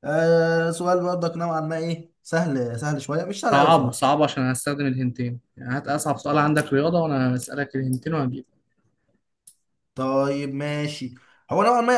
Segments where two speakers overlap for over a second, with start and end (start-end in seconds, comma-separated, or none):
none